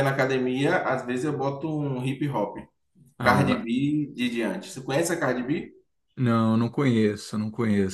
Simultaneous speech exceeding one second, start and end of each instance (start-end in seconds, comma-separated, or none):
none